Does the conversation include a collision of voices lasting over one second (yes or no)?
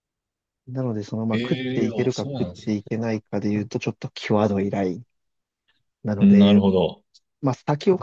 yes